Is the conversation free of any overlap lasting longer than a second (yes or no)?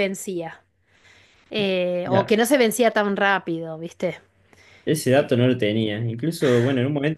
yes